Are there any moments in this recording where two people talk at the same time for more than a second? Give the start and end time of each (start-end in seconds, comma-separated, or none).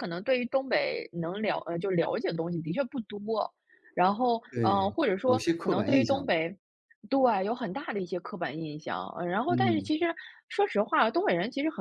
4.5-6.4